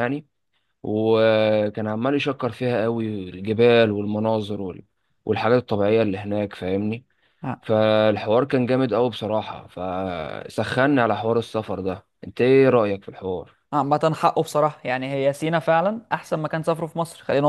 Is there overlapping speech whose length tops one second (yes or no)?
no